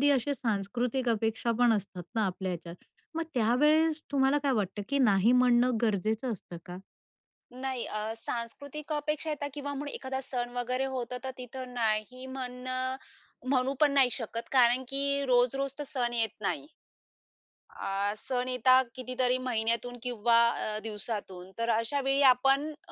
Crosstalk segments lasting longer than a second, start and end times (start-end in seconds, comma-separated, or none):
none